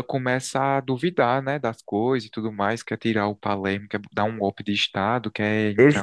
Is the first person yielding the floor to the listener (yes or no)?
yes